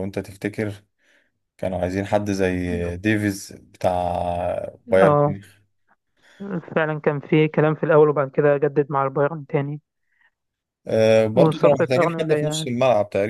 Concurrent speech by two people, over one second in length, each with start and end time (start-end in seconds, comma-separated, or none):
11.3-12.7